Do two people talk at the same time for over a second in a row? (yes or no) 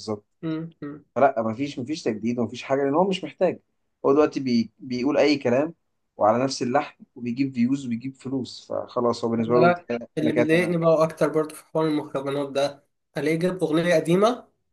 yes